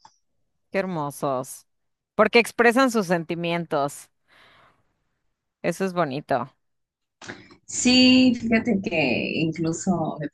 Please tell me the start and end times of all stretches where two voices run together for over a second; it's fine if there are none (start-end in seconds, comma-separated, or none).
none